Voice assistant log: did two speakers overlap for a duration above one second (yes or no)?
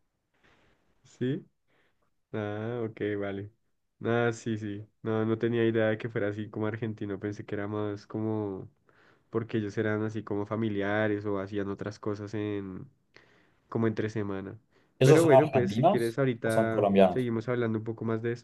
yes